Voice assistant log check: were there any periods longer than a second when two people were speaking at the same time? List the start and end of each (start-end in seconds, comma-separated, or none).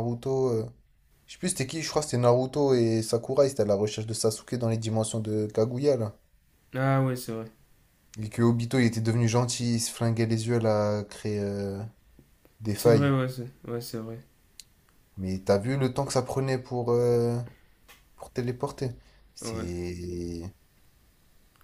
none